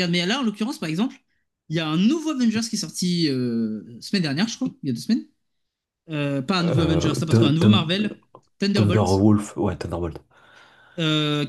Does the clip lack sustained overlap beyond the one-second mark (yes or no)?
no